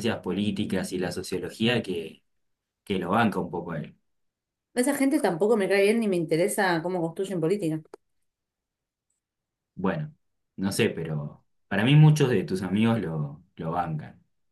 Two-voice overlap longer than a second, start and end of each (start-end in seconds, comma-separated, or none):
none